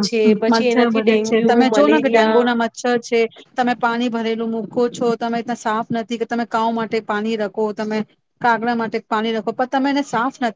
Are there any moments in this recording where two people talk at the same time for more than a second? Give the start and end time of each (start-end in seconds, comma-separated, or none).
0.5-2.4